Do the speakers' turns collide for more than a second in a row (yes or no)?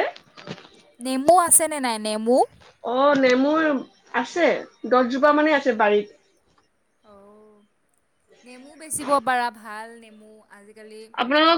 no